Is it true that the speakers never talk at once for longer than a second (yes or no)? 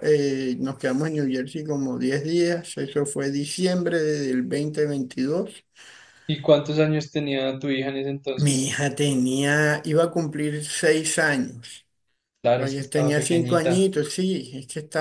no